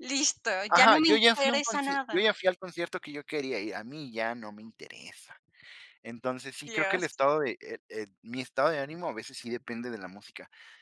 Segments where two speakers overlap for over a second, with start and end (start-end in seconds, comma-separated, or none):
0.7-2.3